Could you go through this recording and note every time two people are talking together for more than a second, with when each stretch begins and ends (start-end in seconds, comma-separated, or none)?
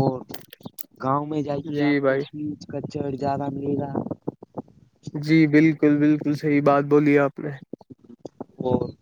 none